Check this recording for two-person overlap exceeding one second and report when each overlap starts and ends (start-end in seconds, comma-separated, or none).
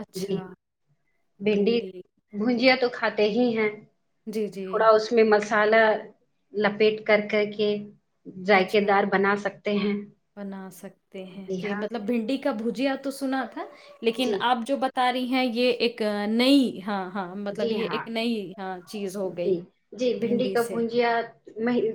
none